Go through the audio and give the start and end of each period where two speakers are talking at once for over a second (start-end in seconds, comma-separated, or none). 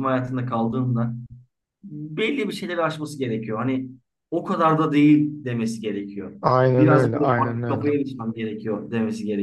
6.8-8.0